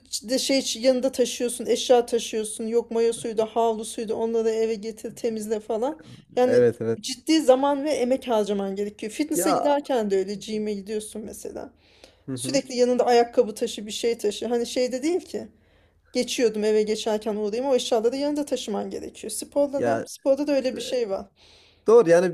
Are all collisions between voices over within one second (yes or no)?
yes